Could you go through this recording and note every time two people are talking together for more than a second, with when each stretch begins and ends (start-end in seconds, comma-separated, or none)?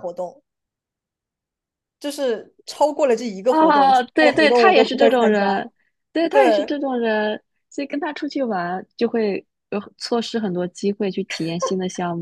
3.5-5.6